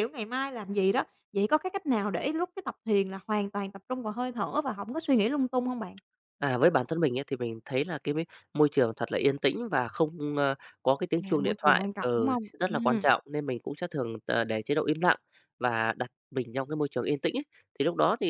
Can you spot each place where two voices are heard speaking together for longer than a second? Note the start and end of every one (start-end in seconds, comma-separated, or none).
11.2-13.1